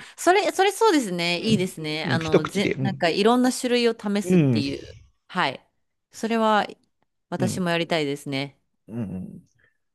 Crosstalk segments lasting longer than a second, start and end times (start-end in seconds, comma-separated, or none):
1.4-3.1